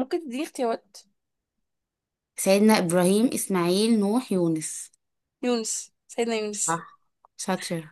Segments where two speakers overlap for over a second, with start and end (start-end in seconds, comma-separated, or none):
none